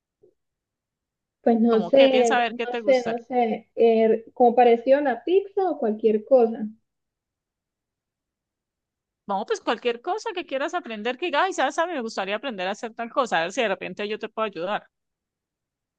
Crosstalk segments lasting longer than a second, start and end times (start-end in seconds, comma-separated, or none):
1.7-3.2